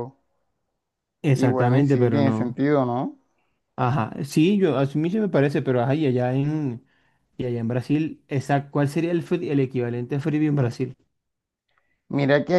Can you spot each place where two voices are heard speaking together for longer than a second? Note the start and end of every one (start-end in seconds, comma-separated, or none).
1.3-2.6